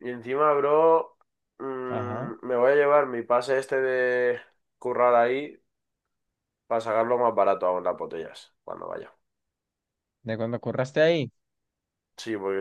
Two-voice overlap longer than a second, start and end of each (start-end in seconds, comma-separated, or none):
none